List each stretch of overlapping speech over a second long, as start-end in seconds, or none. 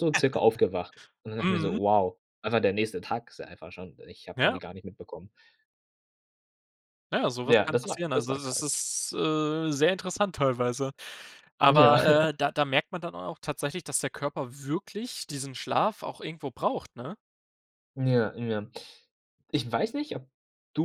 7.5-8.7